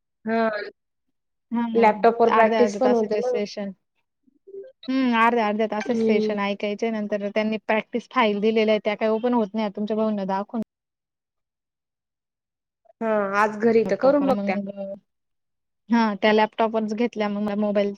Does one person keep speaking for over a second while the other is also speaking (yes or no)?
no